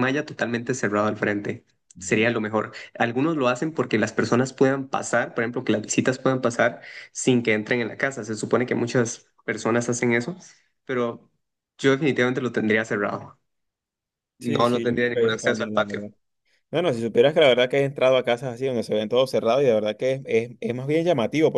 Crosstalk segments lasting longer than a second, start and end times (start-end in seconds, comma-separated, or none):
14.4-16.1